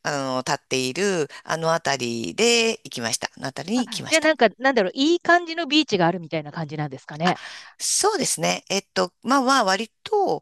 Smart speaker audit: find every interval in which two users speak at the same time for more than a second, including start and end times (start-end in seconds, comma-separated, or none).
none